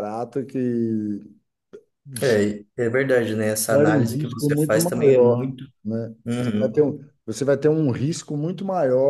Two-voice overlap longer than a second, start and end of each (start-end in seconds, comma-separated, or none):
3.7-5.7